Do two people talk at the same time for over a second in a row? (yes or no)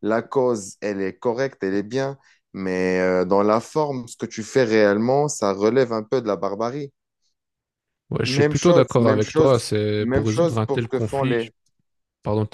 yes